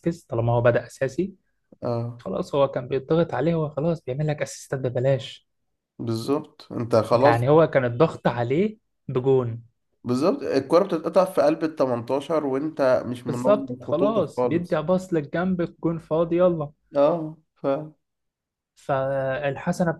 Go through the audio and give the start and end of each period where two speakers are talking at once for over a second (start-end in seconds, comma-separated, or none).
13.3-14.8